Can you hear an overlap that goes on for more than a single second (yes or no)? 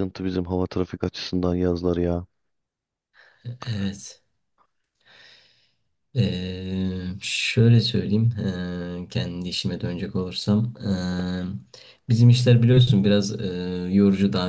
no